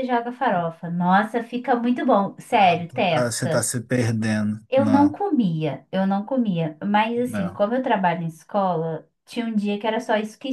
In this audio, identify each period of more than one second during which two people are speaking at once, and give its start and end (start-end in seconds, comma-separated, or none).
2.5-3.7